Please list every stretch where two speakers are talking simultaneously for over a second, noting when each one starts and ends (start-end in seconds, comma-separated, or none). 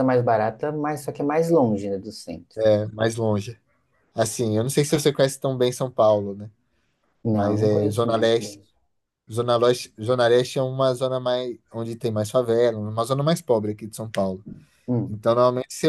7.3-8.6